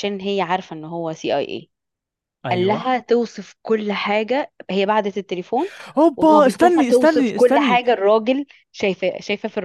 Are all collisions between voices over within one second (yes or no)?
no